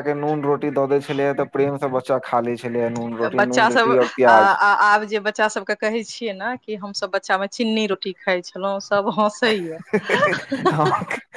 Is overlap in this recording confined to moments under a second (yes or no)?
yes